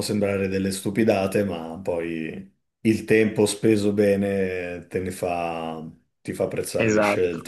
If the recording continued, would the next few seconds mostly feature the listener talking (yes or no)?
yes